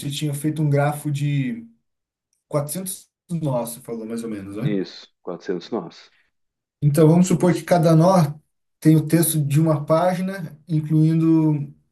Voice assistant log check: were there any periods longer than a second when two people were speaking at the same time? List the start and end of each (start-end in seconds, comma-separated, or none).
none